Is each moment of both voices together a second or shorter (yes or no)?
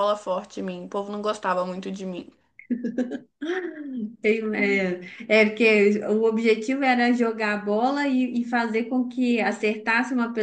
yes